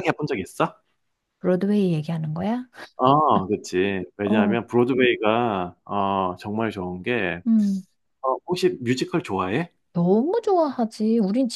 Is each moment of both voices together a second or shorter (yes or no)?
yes